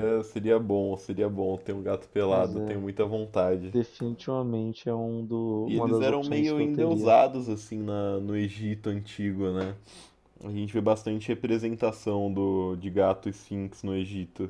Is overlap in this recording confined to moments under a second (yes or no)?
no